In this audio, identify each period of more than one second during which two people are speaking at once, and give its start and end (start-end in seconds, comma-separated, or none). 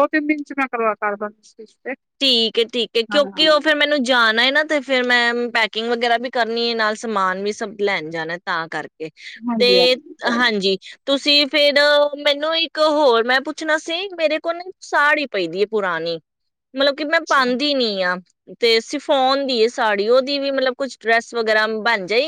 none